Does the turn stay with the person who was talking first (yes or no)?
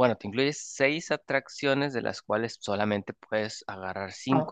no